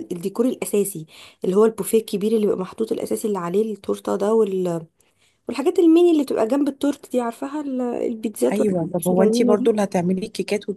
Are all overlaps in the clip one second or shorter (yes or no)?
no